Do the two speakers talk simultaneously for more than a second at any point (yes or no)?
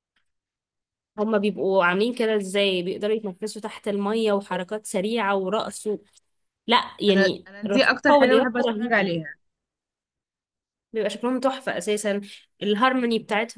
yes